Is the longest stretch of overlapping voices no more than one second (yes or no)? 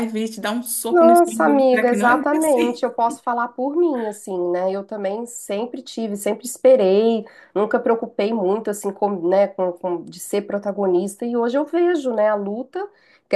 no